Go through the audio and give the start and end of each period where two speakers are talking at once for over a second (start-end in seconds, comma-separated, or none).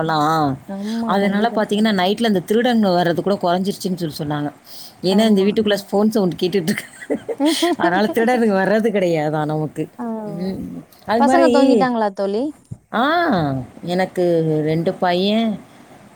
none